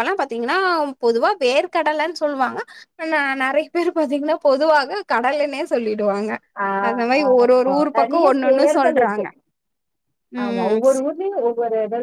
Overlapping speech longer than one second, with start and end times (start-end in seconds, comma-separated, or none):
7.3-9.2